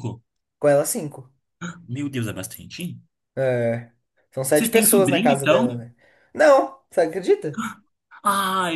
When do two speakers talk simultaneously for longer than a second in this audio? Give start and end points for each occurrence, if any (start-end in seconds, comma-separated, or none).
4.5-5.8